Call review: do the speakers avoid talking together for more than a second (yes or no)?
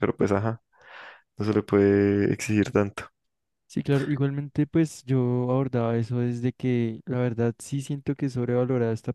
yes